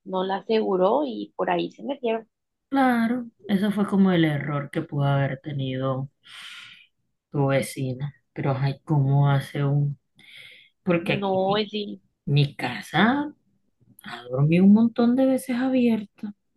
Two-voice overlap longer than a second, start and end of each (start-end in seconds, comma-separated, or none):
none